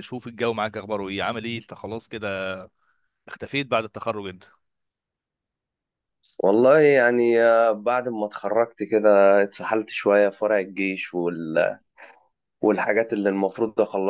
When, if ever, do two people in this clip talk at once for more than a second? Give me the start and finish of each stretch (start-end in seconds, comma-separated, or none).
none